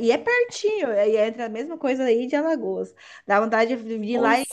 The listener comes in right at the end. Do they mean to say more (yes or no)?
no